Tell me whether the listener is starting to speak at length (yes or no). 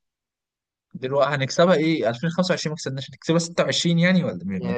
yes